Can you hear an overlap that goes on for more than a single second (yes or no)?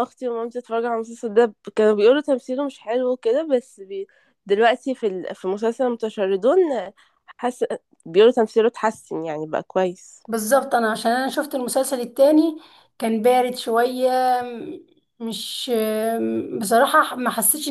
no